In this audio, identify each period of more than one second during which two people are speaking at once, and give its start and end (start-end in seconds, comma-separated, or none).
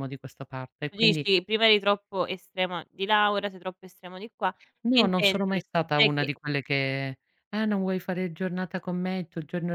4.9-6.3